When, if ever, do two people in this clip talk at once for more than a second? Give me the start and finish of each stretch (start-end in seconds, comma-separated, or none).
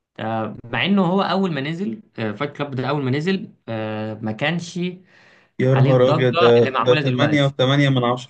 5.7-7.5